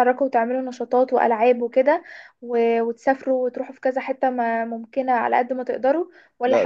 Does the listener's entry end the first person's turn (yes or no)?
no